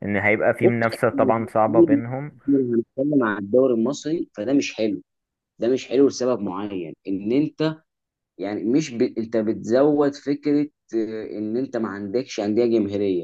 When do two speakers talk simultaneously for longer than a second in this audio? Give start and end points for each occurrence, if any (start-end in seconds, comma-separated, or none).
0.6-2.3